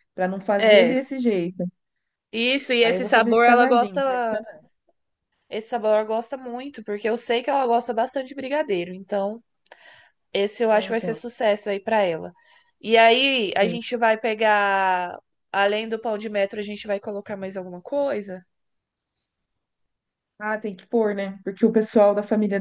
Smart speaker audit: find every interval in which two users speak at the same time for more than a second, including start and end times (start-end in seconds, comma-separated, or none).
2.8-4.4